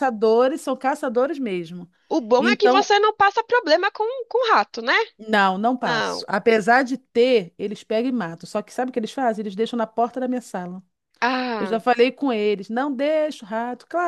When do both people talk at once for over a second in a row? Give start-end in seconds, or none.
none